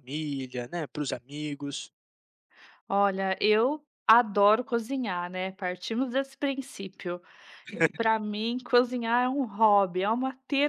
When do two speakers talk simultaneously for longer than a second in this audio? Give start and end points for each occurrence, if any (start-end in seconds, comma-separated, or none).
none